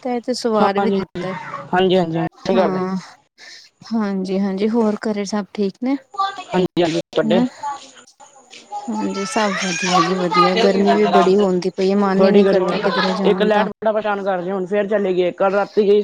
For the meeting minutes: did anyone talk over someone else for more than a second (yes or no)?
no